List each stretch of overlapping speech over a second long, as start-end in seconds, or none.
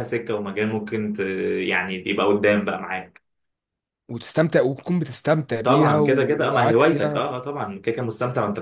5.6-7.3